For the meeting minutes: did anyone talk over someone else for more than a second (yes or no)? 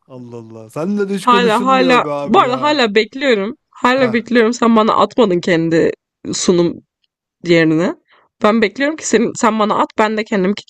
yes